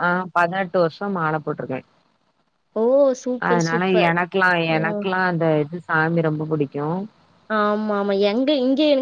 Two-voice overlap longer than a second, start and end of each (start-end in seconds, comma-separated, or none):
none